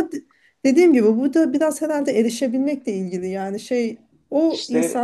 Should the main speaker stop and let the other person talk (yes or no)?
no